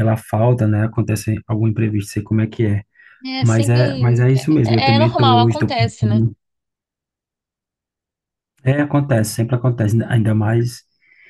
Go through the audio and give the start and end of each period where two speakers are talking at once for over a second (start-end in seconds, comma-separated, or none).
4.6-6.2